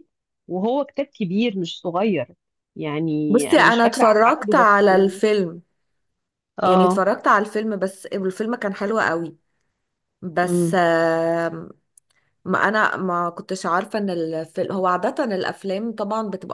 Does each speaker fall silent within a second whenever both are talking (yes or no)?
no